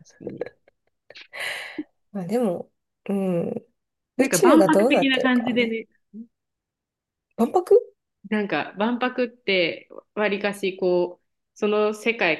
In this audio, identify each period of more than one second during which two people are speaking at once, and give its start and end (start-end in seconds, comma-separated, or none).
4.2-5.8